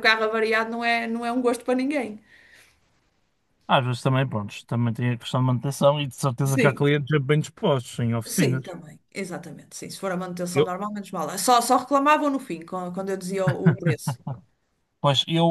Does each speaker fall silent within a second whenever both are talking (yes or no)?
yes